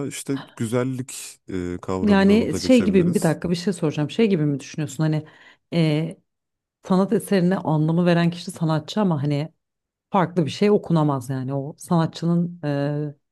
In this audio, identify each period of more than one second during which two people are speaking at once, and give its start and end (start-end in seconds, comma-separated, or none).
2.0-3.4